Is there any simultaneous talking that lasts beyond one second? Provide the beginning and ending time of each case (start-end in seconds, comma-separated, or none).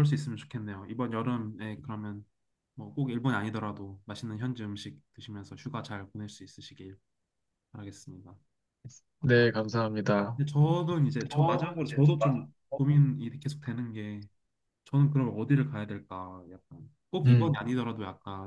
11.3-12.8